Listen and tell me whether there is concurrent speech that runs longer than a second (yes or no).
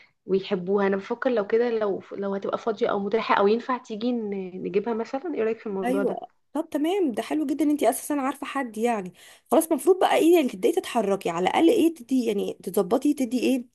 no